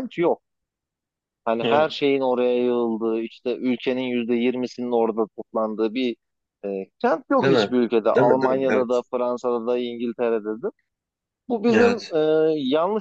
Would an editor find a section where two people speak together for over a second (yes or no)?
yes